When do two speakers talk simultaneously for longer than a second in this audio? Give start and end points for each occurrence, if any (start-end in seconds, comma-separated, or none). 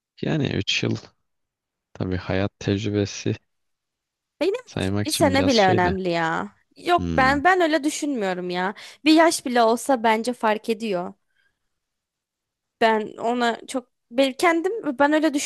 4.7-6.0